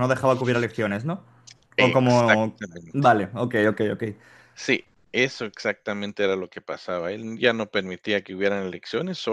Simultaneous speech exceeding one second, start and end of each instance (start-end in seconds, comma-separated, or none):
1.8-3.2